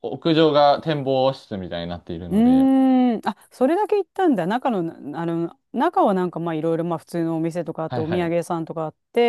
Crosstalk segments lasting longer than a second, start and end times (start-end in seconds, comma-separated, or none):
none